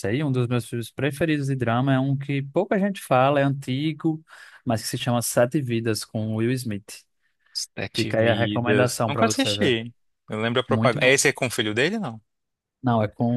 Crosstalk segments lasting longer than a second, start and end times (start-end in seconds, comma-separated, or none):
7.9-9.8